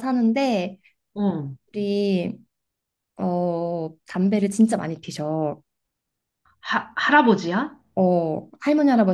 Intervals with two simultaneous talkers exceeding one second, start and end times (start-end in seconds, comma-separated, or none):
none